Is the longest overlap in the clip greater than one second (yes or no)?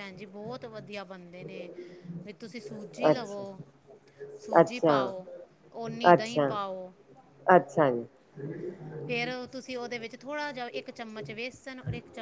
no